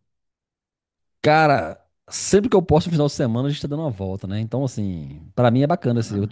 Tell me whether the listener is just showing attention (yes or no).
yes